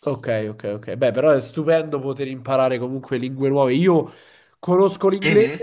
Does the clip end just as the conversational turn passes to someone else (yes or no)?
no